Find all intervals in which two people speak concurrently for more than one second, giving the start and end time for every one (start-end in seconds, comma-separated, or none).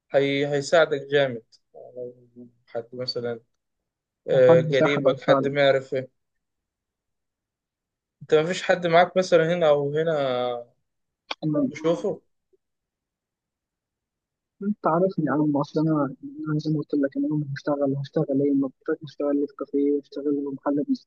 4.3-5.5